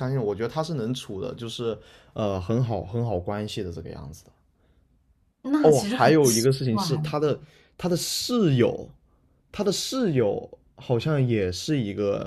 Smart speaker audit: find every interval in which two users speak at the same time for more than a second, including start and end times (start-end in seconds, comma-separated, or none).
5.6-7.2